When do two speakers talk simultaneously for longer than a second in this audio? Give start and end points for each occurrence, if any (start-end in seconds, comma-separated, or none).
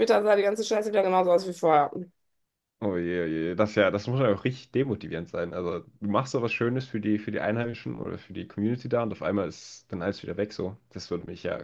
none